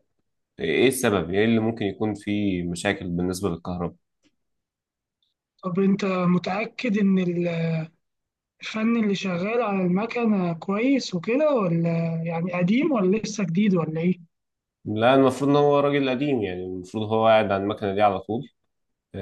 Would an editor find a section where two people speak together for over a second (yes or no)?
no